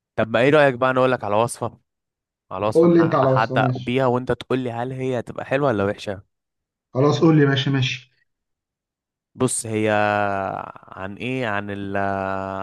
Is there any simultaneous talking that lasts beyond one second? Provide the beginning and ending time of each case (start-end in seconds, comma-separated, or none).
2.7-4.0